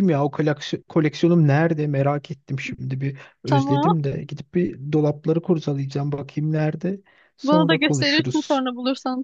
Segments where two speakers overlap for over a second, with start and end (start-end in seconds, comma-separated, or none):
7.4-8.7